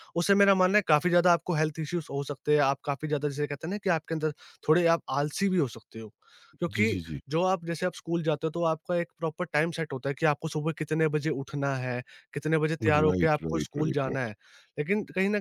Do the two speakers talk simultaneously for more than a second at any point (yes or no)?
yes